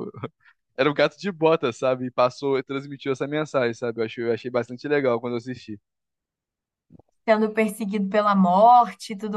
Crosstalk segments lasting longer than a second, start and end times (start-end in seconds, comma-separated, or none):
none